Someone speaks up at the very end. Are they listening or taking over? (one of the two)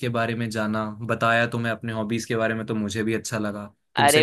taking over